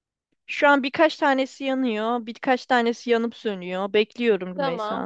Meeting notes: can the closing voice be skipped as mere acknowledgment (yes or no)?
no